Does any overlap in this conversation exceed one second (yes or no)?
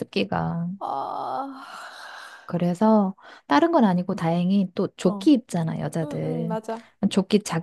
no